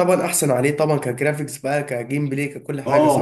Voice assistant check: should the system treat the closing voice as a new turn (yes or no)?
yes